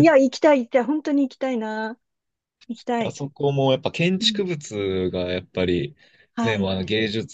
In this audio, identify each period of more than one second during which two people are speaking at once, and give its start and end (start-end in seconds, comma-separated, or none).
none